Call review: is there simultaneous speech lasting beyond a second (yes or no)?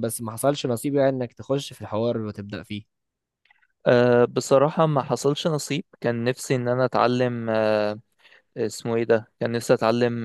no